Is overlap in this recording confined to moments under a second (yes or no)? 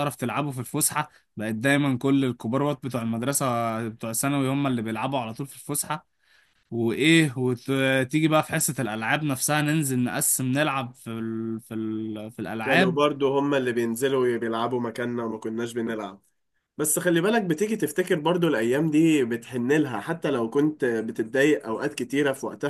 yes